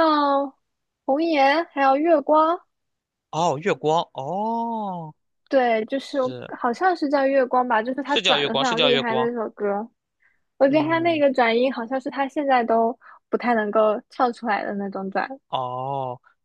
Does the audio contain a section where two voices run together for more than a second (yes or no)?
yes